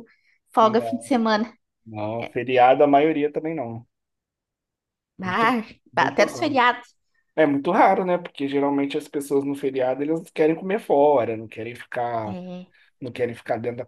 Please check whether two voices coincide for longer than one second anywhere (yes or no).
yes